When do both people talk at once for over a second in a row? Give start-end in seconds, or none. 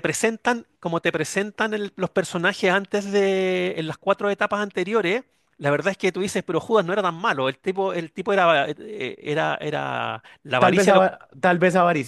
none